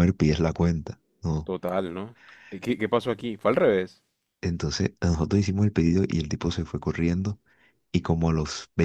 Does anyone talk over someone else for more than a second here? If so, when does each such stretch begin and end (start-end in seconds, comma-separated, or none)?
none